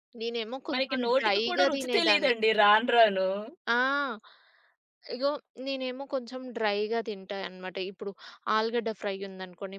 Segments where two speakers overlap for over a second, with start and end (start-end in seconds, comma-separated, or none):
0.7-2.3